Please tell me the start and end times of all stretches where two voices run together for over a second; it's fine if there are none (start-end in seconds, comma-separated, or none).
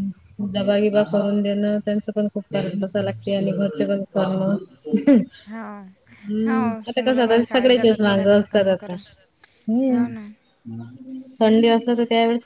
6.4-9.0